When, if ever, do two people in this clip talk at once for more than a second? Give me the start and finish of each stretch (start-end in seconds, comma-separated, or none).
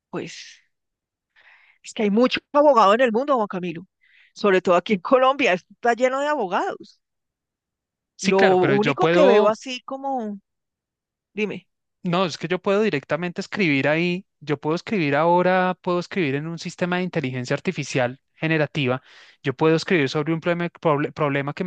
8.2-9.5